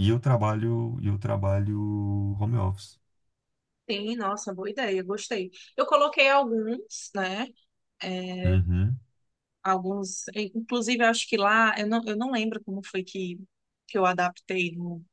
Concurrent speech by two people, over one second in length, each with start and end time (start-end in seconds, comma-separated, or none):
none